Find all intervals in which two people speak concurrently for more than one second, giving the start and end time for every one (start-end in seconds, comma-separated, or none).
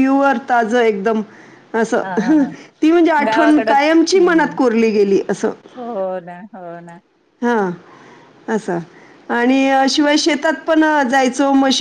3.3-4.6